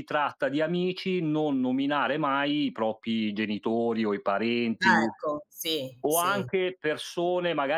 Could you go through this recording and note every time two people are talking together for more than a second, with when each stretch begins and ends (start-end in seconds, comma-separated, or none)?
none